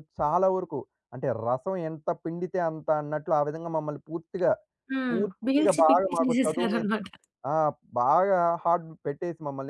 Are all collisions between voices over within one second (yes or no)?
no